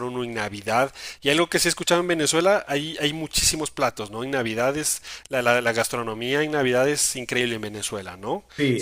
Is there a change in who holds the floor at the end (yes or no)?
yes